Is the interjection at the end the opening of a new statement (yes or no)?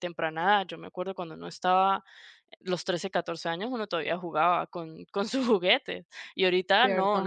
yes